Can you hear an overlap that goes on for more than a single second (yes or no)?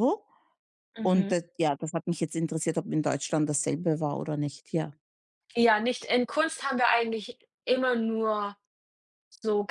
no